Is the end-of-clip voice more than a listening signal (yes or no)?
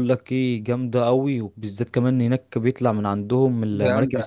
no